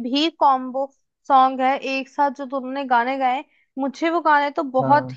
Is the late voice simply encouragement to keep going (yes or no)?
yes